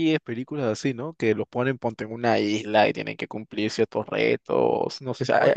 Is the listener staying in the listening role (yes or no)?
yes